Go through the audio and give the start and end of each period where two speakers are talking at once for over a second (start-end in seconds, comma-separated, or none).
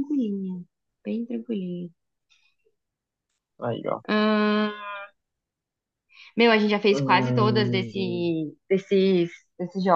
6.9-8.3